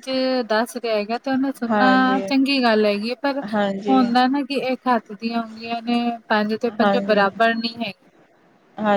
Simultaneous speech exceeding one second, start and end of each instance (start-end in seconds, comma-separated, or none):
none